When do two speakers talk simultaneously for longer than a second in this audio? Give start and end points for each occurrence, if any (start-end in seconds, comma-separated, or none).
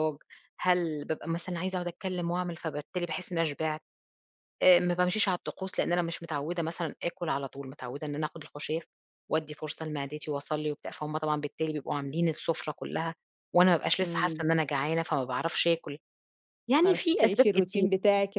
16.7-17.9